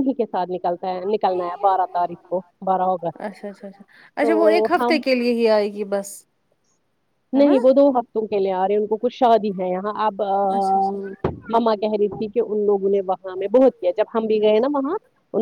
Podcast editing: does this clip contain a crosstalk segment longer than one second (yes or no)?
no